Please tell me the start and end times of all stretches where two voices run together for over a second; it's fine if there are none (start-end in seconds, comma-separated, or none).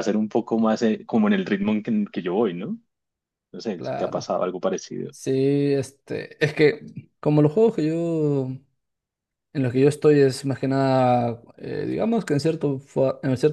none